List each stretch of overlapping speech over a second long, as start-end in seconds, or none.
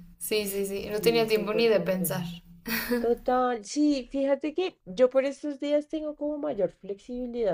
1.0-2.2